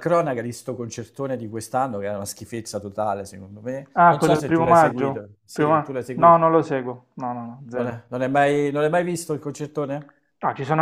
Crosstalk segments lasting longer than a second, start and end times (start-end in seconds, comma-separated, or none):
3.9-6.4